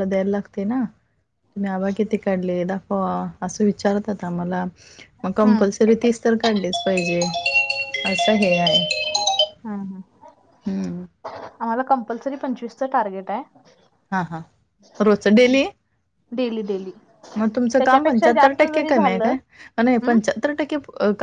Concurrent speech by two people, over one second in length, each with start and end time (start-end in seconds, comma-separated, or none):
17.8-19.3